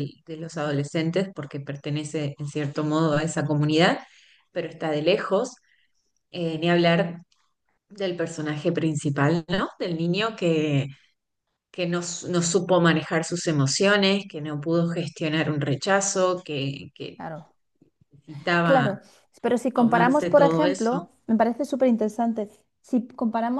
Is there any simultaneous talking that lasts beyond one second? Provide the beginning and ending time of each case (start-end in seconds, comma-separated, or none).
19.8-21.1